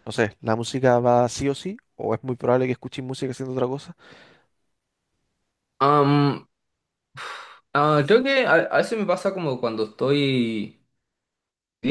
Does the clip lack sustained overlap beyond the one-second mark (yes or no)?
yes